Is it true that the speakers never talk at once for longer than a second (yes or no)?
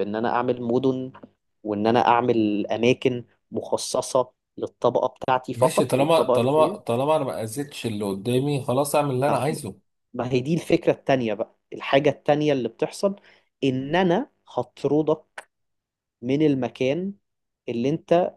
no